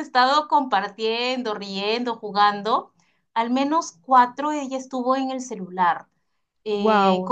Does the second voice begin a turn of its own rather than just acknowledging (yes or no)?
no